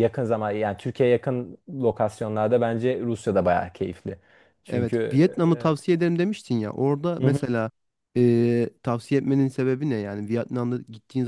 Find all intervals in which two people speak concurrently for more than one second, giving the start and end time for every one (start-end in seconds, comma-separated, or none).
none